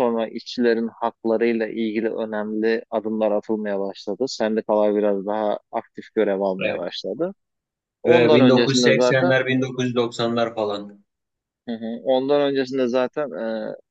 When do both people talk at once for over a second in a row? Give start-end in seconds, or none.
8.1-9.3